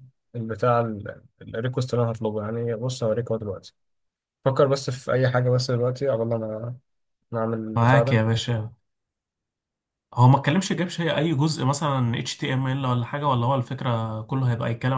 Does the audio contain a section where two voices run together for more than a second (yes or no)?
no